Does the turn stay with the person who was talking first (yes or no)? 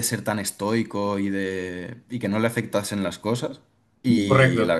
yes